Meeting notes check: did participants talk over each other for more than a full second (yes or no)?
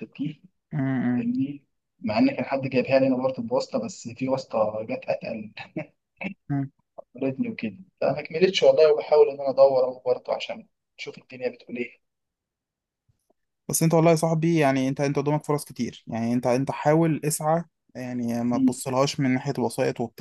no